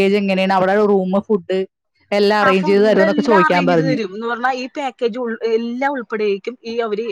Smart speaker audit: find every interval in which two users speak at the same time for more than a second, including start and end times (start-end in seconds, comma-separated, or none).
2.5-4.0